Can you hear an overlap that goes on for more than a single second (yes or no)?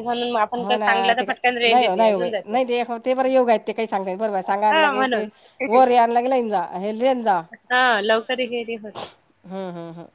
yes